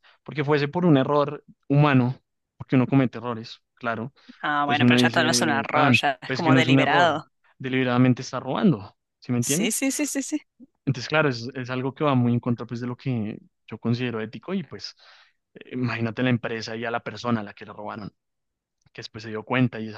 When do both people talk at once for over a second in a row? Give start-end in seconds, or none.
4.7-7.2